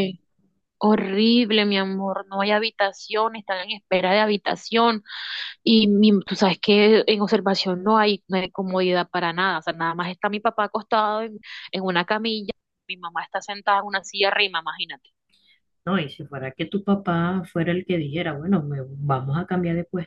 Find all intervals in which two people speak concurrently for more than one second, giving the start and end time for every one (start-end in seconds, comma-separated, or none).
none